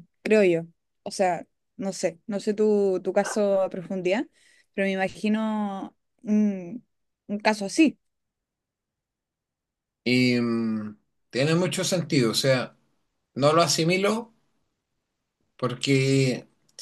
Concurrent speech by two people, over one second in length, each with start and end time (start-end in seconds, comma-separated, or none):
none